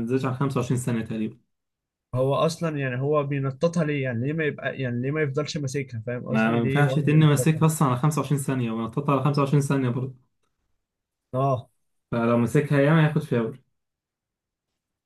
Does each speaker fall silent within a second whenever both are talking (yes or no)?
no